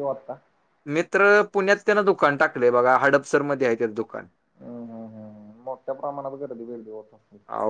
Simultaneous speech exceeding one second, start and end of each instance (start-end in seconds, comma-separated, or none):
none